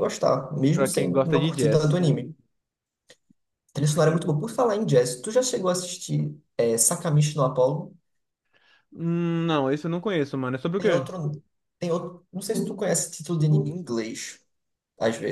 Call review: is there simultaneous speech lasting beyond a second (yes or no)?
yes